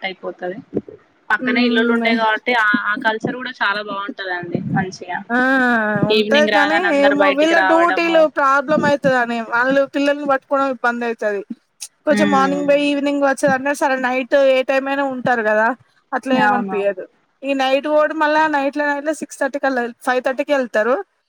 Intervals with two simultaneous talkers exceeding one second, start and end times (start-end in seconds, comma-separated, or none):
6.2-8.2